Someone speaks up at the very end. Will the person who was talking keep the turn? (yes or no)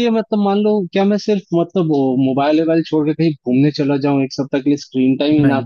yes